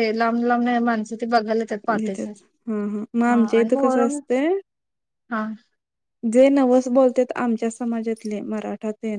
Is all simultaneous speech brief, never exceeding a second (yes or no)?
no